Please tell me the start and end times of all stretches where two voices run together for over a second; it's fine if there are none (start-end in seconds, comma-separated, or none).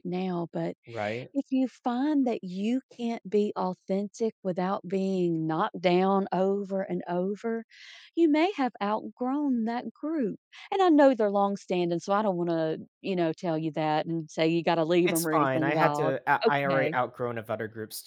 15.1-16.9